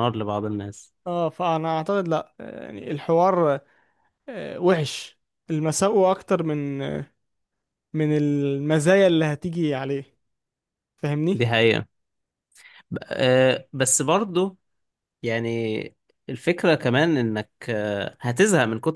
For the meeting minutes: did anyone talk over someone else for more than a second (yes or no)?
no